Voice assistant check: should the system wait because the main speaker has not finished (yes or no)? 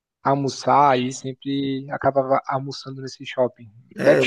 yes